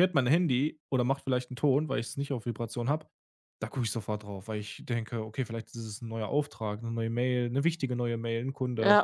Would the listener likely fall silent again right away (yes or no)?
no